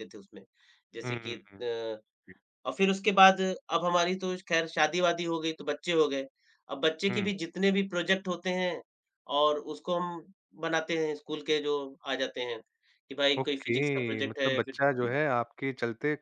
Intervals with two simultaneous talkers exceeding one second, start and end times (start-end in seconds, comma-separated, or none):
13.4-14.8